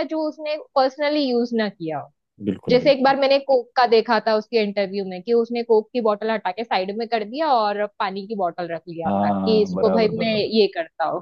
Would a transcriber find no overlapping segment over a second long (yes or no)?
no